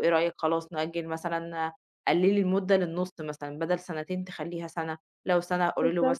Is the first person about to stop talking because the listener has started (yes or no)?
no